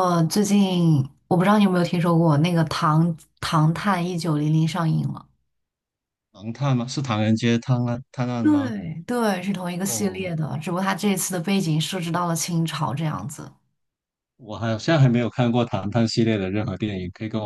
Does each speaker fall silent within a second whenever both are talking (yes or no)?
yes